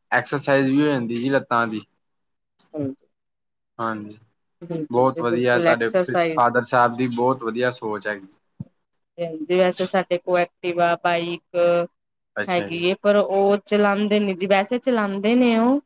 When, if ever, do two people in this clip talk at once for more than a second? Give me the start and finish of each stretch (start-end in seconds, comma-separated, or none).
4.9-6.3